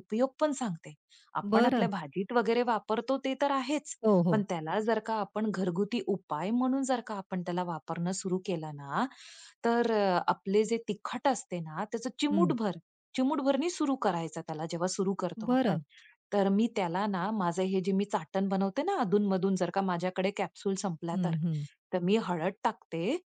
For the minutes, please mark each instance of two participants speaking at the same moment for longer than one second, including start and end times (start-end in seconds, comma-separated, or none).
none